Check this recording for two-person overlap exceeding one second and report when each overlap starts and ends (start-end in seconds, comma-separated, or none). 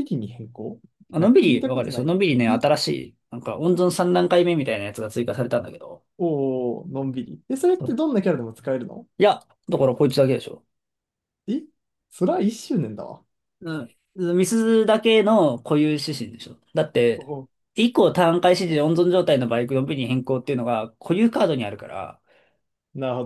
1.2-2.6